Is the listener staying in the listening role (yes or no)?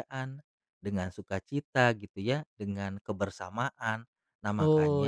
no